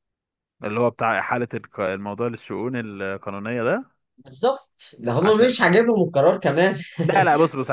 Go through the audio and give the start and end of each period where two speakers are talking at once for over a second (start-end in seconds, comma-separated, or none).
none